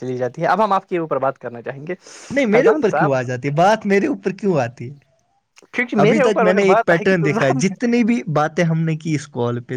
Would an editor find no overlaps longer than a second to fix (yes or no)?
no